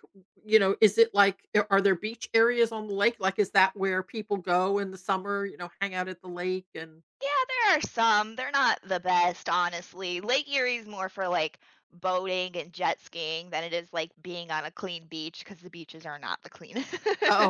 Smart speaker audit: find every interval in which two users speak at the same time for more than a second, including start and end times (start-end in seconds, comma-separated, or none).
none